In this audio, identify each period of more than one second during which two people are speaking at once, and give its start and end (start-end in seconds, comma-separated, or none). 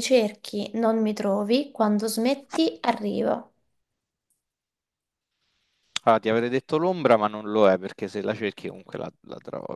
none